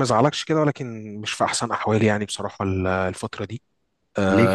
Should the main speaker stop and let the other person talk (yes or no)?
no